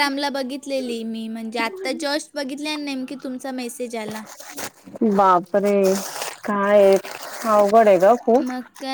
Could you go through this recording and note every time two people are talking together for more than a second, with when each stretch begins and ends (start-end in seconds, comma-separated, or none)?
none